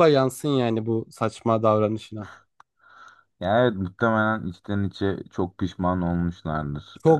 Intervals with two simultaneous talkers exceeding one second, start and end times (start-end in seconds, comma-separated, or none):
none